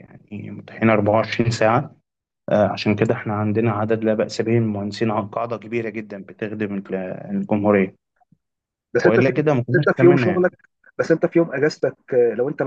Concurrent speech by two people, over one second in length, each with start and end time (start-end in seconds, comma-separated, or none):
9.0-10.4